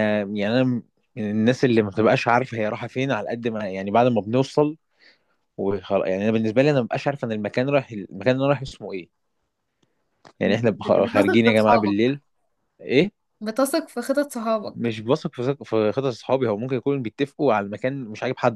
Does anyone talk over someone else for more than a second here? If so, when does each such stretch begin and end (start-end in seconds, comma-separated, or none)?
10.5-12.0